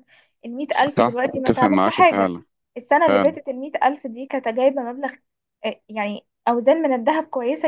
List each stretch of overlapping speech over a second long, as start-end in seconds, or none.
1.0-2.3